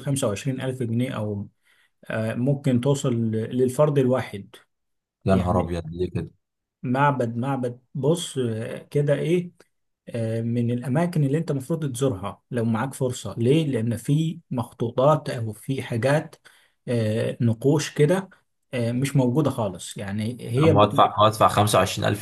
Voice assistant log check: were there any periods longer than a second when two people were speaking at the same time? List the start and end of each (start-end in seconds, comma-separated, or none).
none